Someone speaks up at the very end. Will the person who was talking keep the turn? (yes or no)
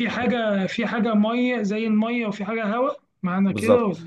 no